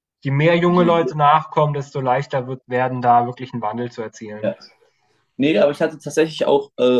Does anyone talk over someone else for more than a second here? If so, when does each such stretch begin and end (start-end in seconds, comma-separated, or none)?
none